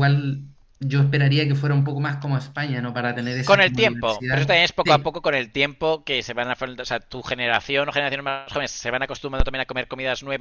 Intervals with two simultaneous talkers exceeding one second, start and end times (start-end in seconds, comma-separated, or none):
3.4-5.2